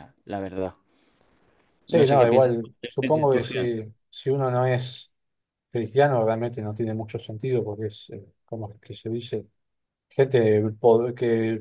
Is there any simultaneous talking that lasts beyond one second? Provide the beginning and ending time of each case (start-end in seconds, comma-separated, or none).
1.9-3.7